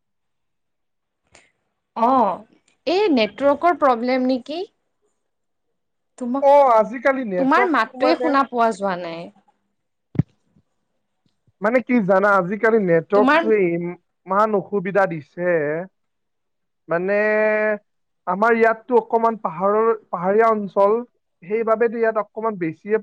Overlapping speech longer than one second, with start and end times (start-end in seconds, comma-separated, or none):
6.5-8.3